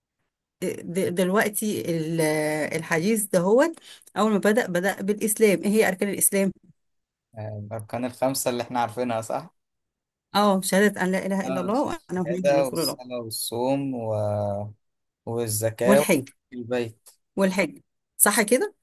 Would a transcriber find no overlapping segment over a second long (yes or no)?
no